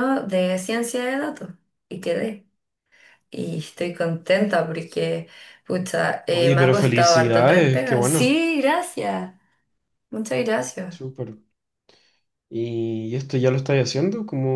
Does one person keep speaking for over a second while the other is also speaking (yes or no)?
yes